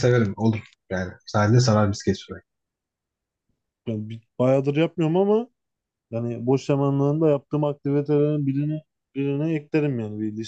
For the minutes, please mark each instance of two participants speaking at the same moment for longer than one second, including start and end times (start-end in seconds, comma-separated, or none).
none